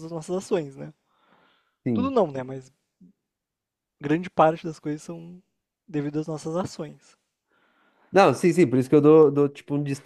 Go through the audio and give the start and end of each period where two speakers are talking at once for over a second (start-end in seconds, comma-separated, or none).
none